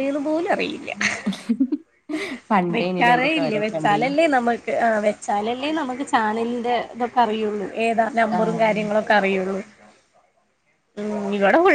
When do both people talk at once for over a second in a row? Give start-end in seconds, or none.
2.7-4.1